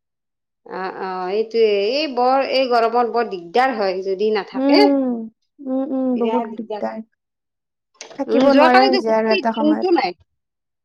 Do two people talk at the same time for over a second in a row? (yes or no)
yes